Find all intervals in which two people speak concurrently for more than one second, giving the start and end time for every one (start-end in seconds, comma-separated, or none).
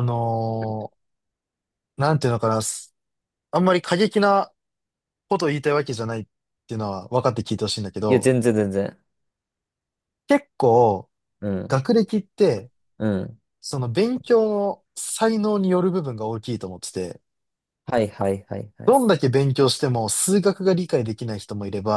none